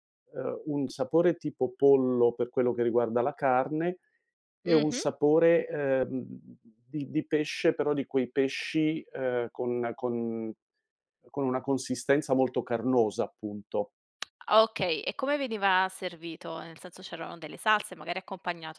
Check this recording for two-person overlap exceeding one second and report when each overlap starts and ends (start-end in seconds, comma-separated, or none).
none